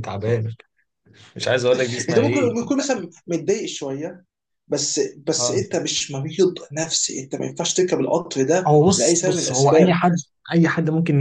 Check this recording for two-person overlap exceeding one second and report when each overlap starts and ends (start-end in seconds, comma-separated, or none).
8.7-10.0